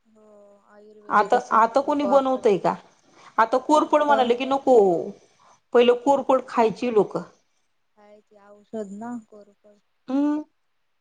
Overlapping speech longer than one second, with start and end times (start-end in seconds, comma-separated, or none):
1.2-2.7